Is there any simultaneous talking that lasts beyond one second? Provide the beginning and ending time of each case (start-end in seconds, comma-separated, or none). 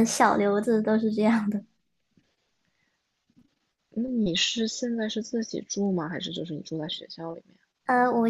none